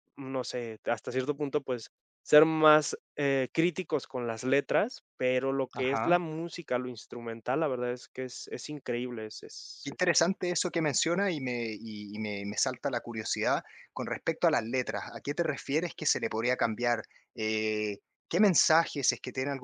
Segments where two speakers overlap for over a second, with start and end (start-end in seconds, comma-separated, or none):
none